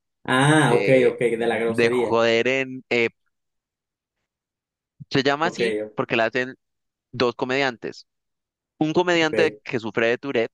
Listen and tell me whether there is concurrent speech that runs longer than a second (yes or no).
yes